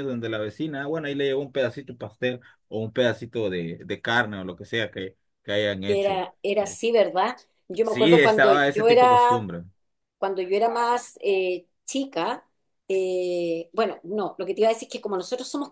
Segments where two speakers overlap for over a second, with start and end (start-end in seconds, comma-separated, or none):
7.8-9.5